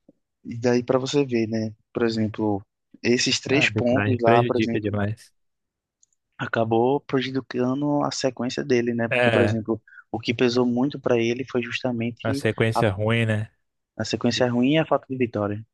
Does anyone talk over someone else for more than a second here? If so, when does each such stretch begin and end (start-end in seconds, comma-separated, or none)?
3.5-4.9